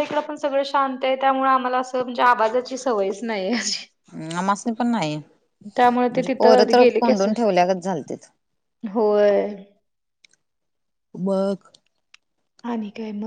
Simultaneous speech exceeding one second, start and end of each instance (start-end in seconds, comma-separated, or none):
5.8-7.3